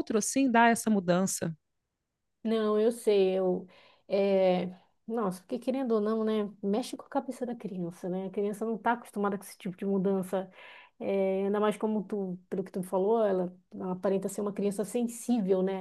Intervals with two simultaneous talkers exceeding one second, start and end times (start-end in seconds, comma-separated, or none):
none